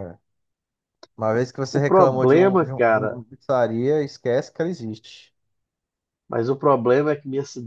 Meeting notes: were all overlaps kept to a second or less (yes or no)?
no